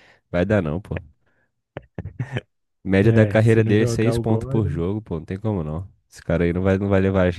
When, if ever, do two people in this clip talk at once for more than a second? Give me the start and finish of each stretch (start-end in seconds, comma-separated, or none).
3.0-4.8